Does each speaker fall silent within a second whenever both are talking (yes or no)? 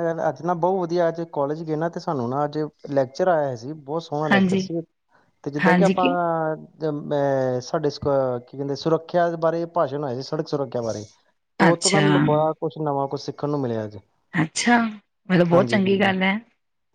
yes